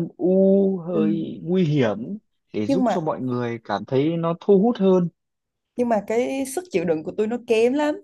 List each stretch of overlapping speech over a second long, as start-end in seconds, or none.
none